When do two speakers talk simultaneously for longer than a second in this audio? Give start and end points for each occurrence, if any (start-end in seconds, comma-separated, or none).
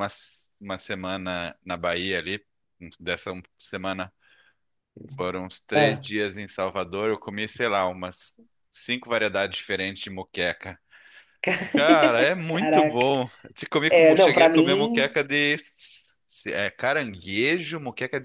13.9-15.2